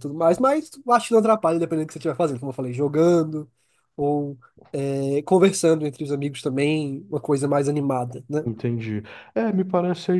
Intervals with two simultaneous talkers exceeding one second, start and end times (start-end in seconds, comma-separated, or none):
none